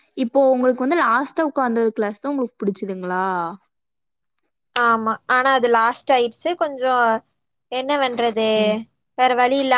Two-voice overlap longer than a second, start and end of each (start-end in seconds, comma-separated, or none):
none